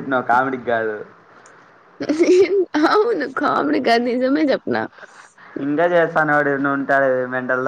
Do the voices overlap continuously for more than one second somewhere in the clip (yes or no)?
no